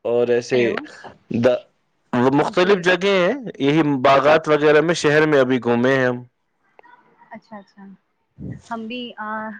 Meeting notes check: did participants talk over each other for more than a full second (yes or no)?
no